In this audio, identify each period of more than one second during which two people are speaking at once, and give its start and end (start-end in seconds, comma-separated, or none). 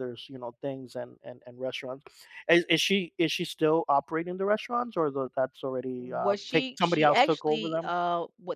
6.0-7.9